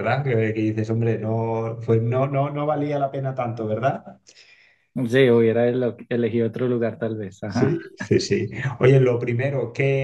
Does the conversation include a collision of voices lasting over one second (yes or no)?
no